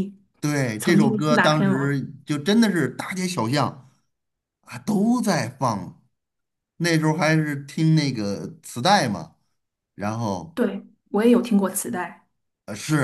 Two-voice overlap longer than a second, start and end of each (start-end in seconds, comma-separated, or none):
0.8-2.0